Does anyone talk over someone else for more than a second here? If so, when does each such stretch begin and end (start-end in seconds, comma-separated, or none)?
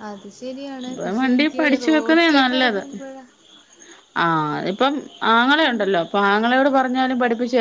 0.9-2.8